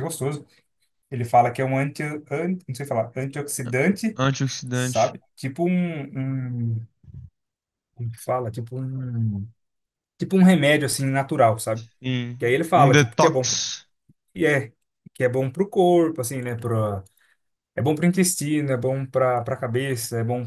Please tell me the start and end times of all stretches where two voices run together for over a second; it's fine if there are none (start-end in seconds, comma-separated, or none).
12.4-13.6